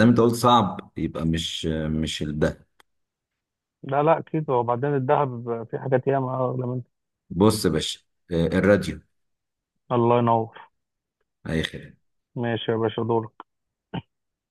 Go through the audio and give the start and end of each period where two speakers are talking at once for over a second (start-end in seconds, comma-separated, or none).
none